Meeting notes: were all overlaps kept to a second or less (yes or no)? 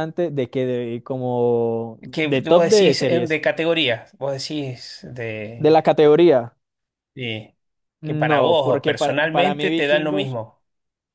no